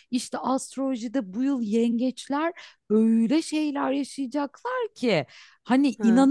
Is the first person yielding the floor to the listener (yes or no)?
no